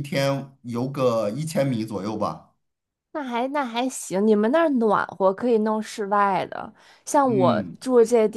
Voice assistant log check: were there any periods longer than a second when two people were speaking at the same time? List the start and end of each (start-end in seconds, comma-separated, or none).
none